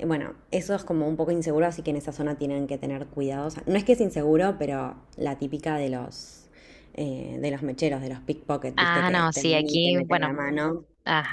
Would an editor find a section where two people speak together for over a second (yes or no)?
yes